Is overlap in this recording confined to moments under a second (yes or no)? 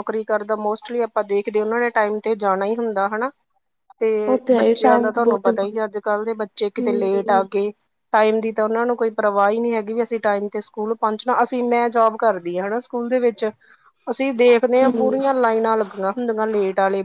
no